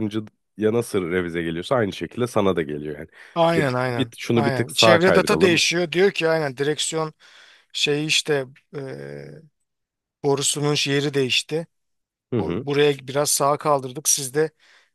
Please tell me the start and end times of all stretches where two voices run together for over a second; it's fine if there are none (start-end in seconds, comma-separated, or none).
3.5-5.6